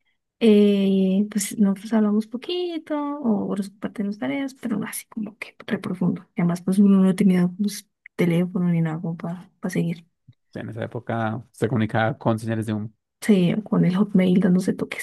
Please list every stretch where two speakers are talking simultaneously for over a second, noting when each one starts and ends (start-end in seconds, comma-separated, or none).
none